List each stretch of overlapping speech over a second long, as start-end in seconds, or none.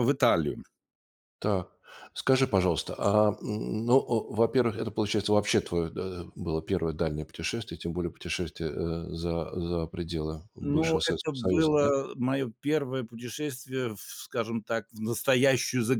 10.6-11.9